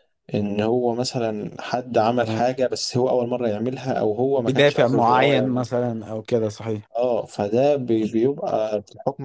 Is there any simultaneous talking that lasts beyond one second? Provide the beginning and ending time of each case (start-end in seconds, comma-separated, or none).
4.5-5.7